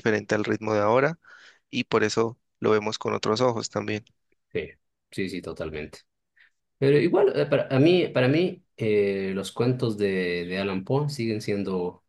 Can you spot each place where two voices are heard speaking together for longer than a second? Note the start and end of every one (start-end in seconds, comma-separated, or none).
none